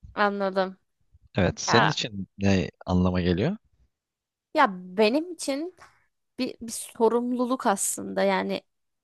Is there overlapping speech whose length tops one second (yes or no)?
no